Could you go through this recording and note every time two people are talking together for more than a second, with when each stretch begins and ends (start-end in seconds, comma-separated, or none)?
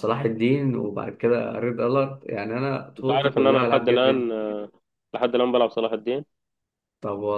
3.0-4.3